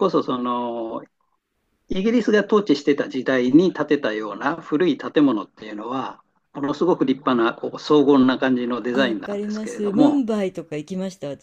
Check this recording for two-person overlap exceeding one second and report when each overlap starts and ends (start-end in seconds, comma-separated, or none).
8.9-10.2